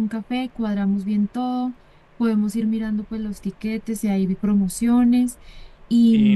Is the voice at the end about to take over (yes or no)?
yes